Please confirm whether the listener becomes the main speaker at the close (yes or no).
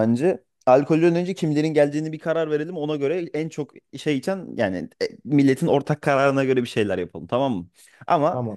no